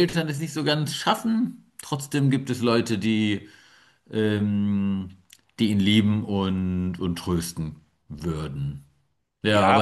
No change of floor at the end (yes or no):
yes